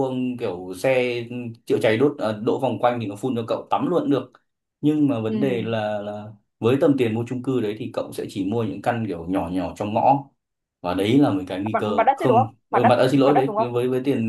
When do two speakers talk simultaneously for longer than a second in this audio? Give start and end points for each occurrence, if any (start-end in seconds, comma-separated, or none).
11.7-13.7